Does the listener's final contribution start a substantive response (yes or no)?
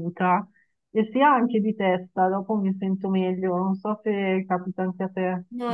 yes